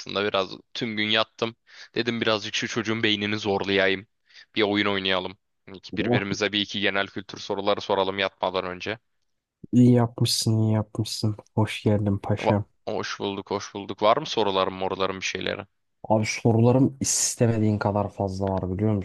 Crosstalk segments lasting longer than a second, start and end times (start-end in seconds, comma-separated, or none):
none